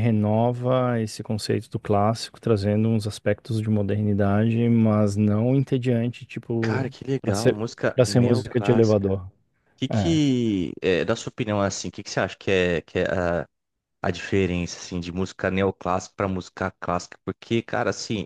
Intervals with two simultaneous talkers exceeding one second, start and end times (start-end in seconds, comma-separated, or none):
6.6-9.1